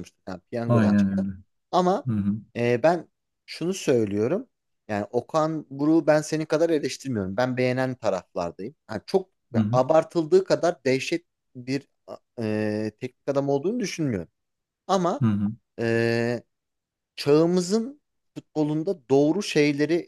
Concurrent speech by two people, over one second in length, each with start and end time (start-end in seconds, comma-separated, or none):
none